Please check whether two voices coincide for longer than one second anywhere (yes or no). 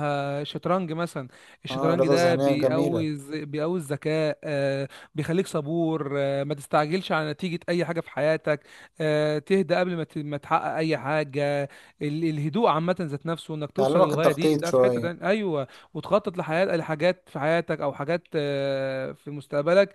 yes